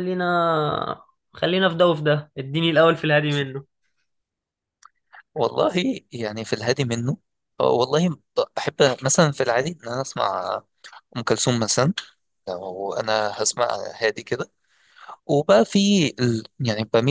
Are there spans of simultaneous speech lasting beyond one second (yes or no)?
no